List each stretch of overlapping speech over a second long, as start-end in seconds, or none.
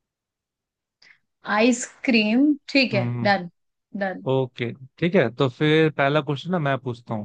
none